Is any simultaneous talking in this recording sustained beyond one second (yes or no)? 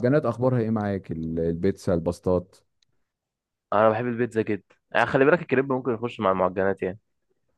no